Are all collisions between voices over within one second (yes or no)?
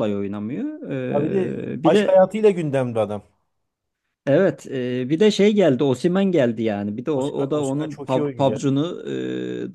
no